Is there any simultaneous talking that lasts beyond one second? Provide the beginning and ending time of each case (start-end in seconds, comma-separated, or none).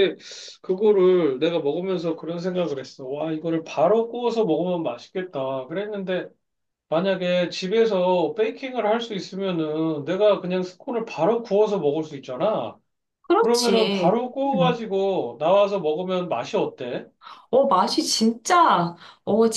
13.3-14.8